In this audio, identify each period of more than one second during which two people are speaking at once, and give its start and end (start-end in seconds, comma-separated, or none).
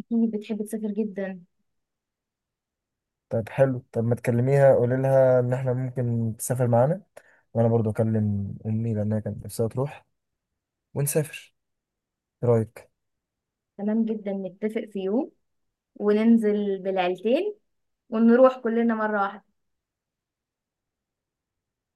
none